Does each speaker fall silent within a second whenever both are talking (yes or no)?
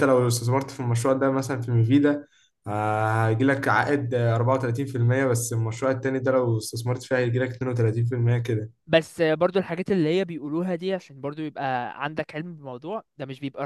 yes